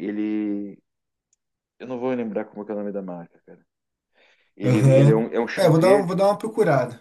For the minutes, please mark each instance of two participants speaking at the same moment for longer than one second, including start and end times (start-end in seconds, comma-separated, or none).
4.6-6.2